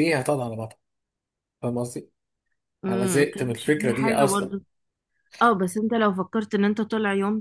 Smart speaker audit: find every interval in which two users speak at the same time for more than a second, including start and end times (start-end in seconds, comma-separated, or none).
2.9-4.5